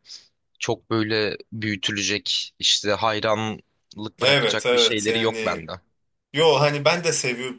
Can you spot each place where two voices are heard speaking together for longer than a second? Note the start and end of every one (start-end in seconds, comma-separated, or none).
4.2-5.7